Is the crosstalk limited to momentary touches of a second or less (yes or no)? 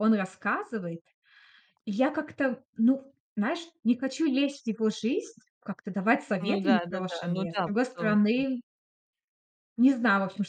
no